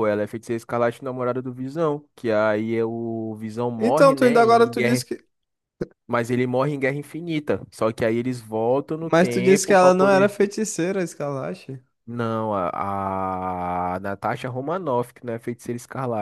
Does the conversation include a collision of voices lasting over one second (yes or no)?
yes